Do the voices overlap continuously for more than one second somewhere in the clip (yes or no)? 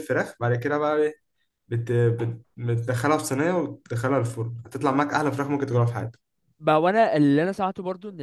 no